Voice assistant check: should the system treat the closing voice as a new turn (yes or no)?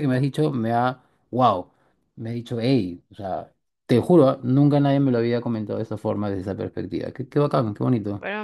yes